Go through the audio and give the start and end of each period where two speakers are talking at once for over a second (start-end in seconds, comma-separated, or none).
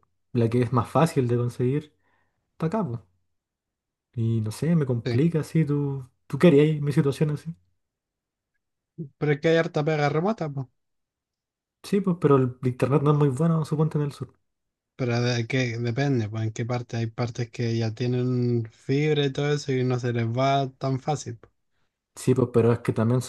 none